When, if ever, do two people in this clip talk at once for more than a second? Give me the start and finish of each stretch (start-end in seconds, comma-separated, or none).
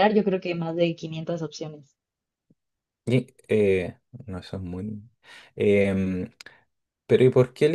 none